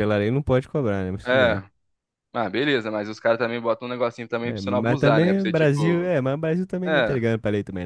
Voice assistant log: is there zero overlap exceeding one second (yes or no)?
no